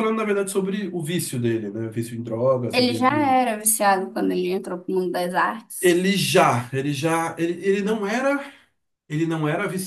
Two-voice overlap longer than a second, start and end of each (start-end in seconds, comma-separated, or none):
none